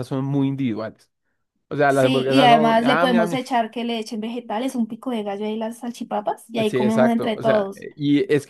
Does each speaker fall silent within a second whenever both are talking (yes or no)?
no